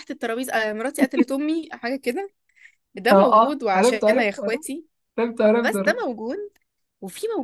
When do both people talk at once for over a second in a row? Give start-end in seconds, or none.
3.1-4.6